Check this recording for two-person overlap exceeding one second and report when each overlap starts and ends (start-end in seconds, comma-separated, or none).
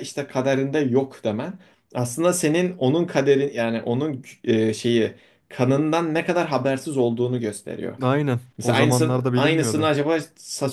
8.6-9.9